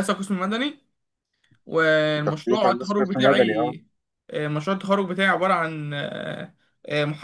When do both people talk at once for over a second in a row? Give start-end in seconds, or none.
2.2-3.7